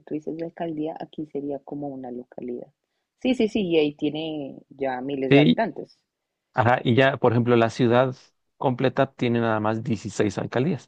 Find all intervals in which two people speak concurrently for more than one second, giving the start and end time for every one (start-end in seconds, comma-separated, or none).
none